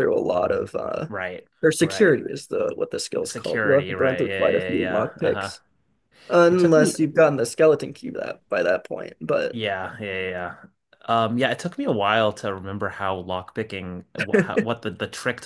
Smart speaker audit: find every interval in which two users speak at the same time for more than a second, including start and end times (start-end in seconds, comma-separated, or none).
3.2-5.5